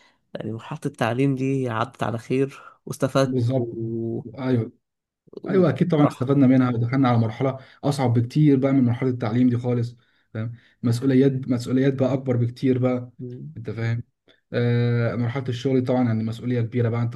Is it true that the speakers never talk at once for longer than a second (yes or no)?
yes